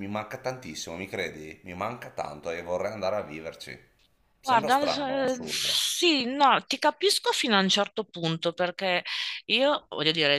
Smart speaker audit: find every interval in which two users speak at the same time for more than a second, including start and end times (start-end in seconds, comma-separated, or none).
4.4-5.8